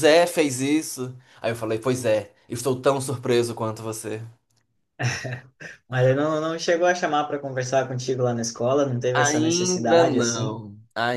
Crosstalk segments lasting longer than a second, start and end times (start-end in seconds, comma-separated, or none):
9.1-10.6